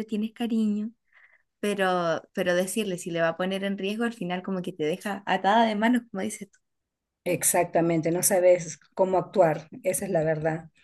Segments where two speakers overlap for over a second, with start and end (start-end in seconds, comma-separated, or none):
none